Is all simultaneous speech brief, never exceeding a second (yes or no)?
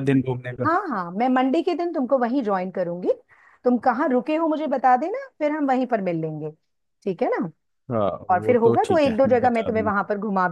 no